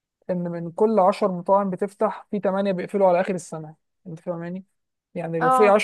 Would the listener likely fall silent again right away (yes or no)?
yes